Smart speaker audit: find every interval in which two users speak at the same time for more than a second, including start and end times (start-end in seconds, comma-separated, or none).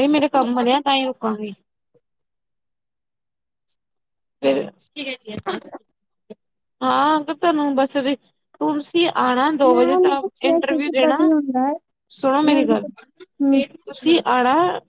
9.7-11.3